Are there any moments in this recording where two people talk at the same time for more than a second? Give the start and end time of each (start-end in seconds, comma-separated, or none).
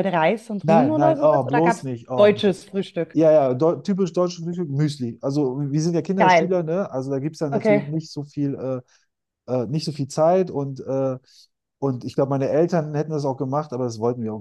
0.6-2.3